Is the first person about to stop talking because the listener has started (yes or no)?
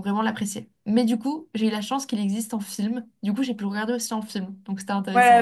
yes